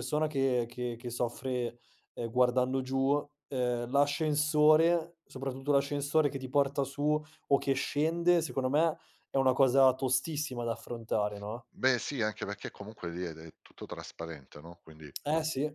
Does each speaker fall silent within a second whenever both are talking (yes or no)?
yes